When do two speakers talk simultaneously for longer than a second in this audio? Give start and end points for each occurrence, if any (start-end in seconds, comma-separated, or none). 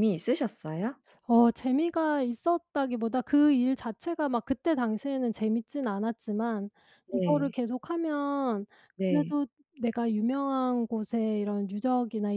none